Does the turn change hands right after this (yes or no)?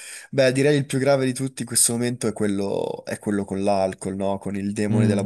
yes